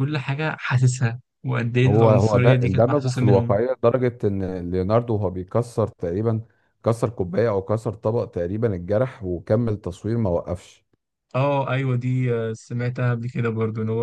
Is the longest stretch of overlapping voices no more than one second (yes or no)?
no